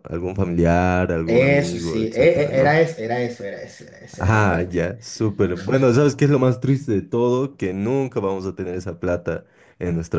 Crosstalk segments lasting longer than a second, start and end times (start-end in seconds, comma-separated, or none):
1.2-2.8